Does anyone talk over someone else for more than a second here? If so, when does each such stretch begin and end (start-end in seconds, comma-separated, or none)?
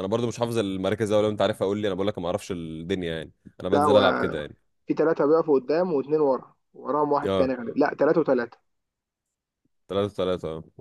none